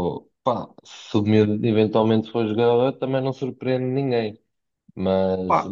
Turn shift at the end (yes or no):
yes